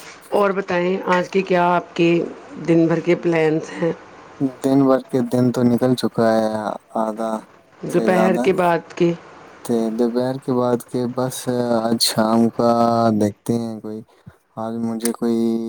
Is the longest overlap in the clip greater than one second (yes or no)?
no